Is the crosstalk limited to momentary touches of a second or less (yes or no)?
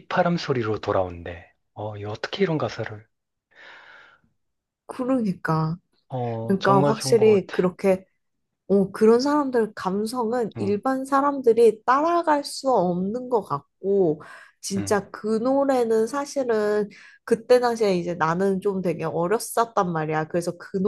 no